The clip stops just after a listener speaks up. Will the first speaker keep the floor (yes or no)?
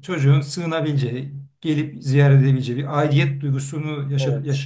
yes